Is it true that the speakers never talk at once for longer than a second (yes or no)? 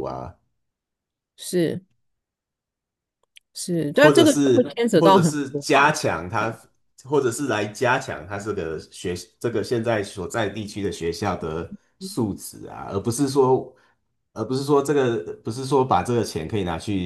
no